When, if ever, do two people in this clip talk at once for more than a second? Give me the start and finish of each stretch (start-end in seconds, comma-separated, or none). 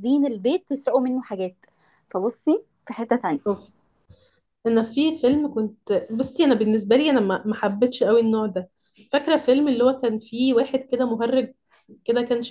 none